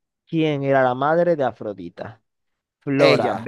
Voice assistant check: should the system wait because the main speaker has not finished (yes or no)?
yes